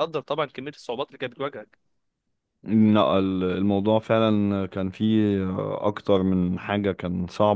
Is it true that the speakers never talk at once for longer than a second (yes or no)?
yes